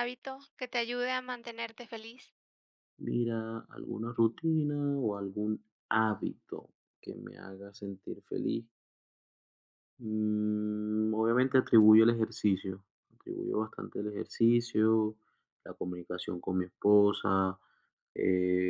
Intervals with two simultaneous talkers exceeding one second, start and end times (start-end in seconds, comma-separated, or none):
none